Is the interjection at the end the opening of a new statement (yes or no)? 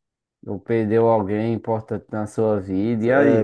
yes